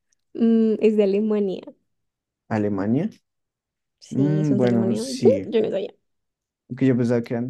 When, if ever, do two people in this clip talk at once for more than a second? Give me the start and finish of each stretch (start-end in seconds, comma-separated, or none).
4.1-5.5